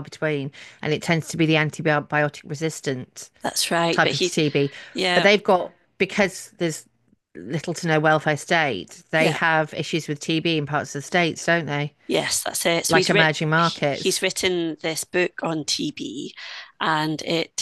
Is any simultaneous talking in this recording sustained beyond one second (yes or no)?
yes